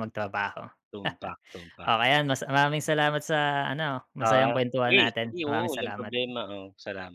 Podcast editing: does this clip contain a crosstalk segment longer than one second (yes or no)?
yes